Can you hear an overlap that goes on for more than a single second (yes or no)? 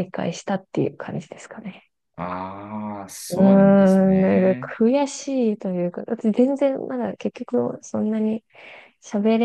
yes